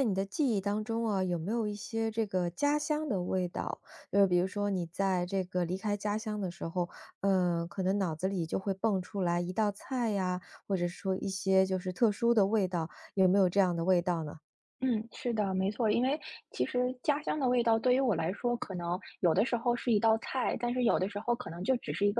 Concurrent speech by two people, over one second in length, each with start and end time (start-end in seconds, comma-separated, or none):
none